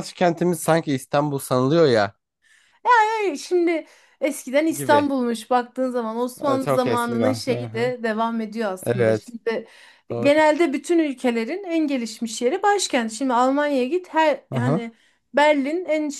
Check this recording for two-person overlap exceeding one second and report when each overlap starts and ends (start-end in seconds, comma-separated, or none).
6.4-7.9